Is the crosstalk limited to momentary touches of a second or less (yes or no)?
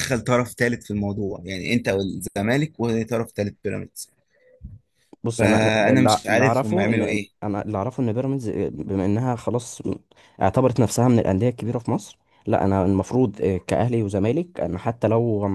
no